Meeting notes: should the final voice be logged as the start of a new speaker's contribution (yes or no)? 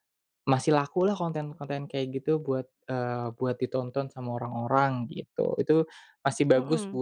no